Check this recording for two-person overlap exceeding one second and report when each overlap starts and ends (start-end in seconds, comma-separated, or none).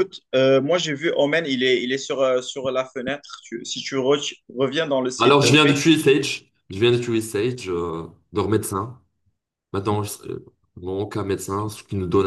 none